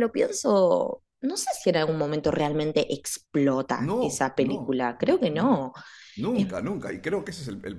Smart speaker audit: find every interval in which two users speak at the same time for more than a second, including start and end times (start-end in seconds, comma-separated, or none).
3.8-5.7